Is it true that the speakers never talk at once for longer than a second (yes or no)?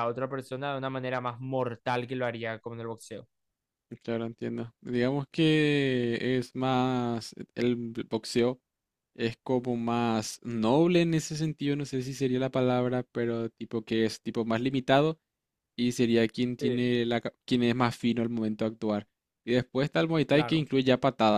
yes